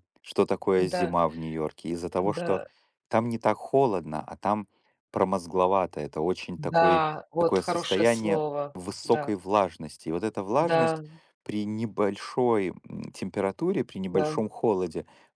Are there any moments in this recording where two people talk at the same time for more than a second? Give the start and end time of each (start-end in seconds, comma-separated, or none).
6.5-9.3